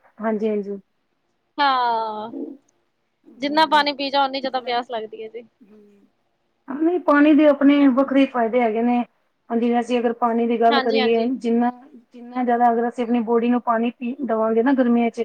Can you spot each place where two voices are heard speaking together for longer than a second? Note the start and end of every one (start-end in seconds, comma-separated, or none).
none